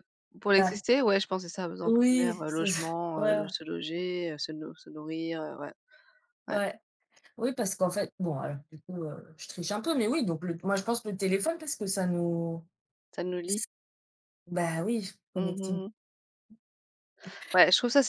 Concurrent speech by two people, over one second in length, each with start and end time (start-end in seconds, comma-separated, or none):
1.9-3.4